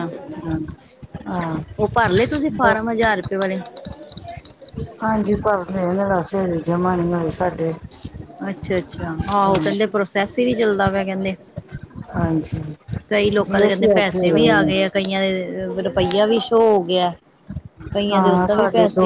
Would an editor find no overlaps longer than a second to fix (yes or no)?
no